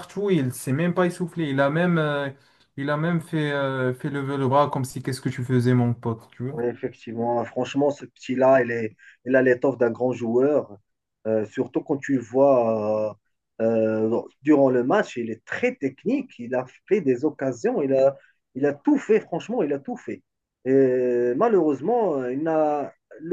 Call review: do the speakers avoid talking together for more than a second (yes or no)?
yes